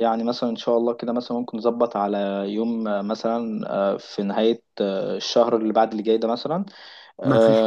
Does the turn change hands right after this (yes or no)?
no